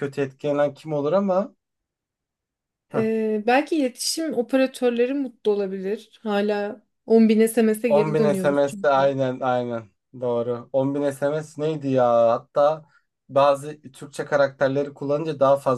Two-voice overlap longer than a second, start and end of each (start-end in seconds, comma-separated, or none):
7.9-9.1